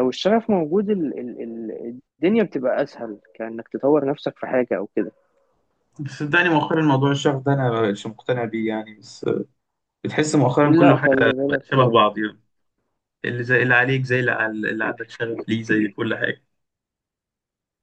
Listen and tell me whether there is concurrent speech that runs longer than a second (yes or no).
yes